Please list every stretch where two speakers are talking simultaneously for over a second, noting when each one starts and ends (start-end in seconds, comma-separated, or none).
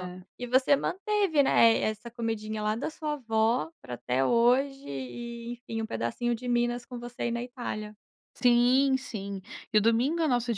none